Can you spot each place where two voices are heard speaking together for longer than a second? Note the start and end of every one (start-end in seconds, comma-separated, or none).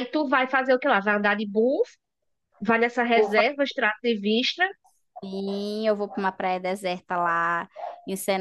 none